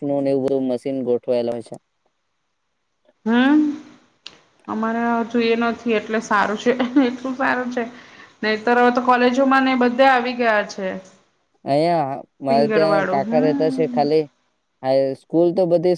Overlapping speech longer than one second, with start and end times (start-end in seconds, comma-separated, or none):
12.5-14.1